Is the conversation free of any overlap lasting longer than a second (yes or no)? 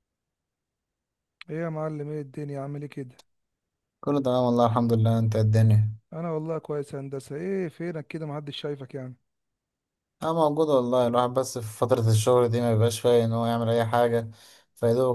yes